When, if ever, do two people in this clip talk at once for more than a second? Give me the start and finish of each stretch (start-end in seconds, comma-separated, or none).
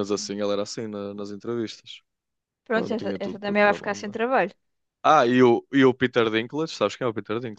2.7-4.2